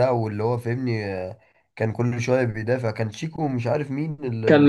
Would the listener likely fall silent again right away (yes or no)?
no